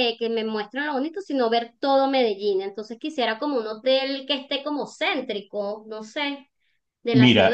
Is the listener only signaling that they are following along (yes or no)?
no